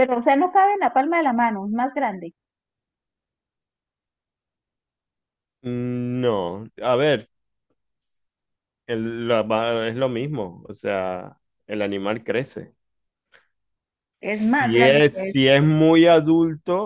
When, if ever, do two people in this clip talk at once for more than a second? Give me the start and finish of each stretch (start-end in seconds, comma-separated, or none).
14.3-15.6